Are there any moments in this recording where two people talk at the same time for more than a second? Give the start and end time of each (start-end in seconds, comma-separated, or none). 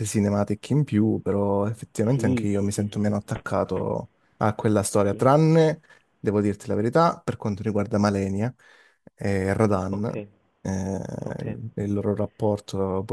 2.1-3.4